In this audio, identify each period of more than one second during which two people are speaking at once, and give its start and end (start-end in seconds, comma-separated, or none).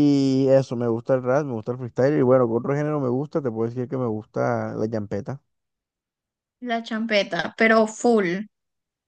none